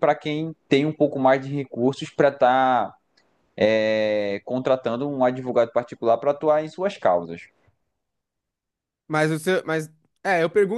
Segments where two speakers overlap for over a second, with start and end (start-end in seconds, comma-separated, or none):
none